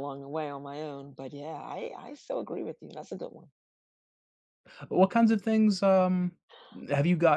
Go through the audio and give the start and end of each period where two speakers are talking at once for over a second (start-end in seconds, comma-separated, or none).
none